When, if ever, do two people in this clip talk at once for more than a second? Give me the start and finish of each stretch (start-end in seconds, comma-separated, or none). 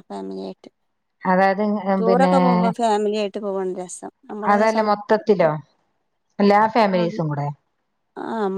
none